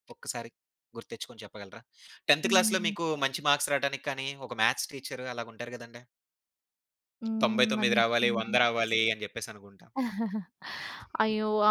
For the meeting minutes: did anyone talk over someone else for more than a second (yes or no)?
yes